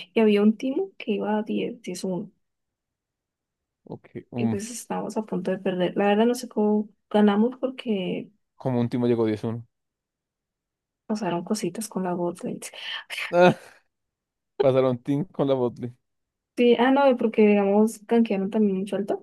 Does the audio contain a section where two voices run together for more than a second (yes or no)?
no